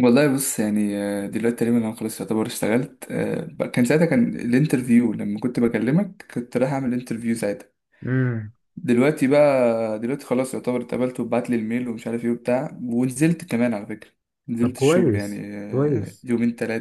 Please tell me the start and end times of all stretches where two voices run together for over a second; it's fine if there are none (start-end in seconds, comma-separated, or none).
14.6-16.3